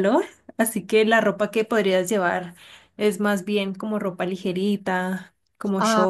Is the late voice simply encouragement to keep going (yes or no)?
no